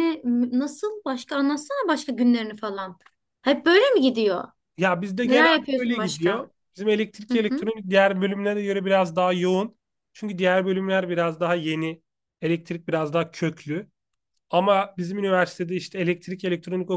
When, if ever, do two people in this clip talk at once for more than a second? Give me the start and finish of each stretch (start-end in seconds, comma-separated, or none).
5.2-6.5